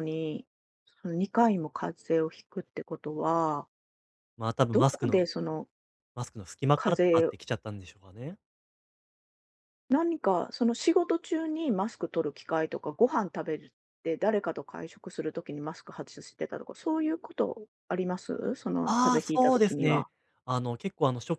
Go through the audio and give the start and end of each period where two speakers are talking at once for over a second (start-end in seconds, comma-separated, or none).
18.9-20.1